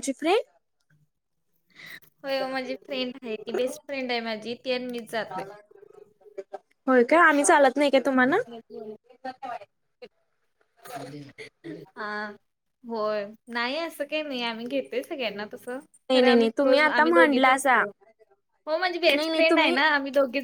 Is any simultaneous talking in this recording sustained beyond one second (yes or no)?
yes